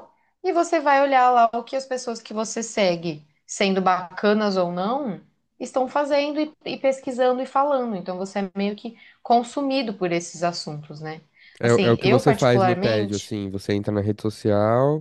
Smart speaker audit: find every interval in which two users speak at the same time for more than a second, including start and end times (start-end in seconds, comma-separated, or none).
11.6-13.4